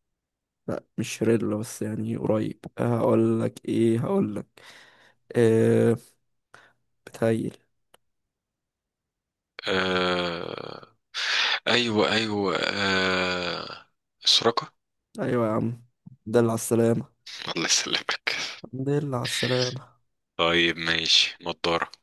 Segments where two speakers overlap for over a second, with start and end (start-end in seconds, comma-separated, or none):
none